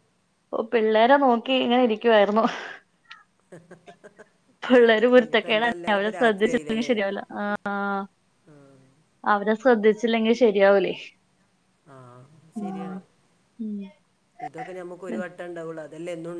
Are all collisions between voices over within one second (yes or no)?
no